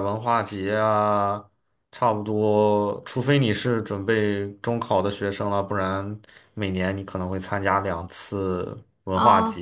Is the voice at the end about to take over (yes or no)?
yes